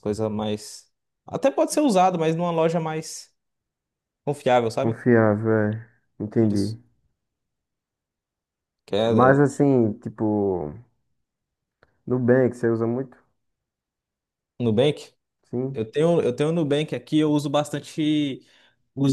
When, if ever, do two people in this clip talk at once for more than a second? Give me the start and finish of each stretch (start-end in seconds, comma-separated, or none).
none